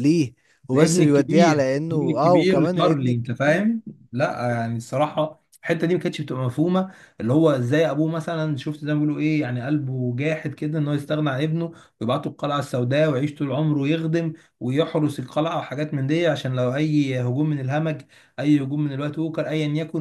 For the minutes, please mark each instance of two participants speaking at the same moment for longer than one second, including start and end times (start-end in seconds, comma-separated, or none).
0.7-3.6